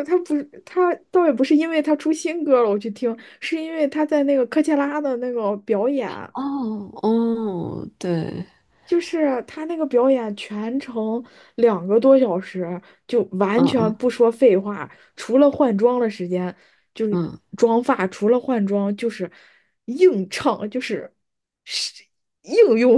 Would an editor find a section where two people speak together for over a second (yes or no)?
no